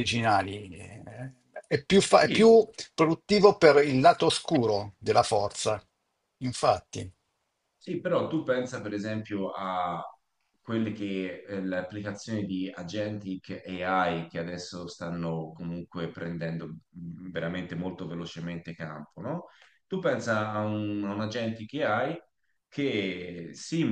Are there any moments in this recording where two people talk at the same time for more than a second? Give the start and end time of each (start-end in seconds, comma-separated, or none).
none